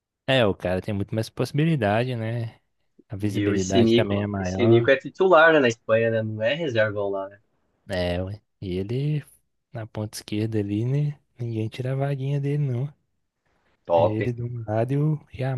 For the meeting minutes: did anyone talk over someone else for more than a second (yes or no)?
yes